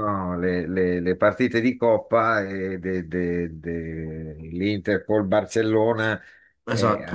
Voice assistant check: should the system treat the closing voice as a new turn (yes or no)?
no